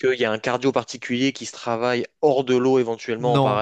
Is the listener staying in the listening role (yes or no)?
no